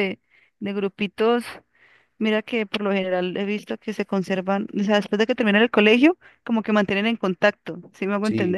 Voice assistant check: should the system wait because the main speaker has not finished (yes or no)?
no